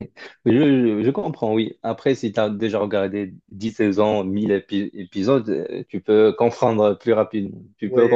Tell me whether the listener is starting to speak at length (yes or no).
yes